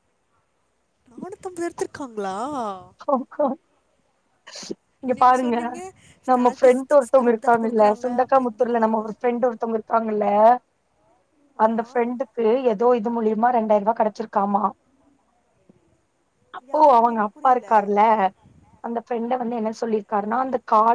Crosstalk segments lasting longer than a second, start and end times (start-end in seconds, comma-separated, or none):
6.3-9.6